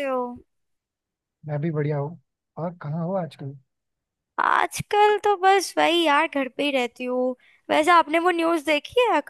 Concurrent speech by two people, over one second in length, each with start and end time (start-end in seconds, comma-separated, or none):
none